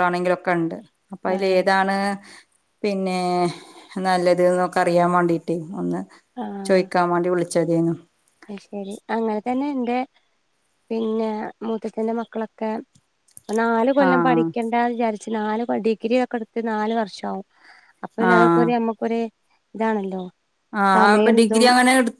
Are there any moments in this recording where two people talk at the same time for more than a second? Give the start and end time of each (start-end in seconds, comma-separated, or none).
none